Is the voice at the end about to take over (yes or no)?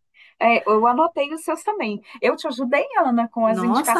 yes